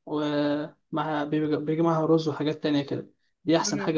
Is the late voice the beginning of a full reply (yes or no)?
no